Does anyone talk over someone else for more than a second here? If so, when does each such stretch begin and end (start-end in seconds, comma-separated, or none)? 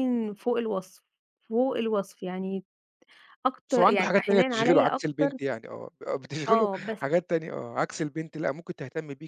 3.7-5.3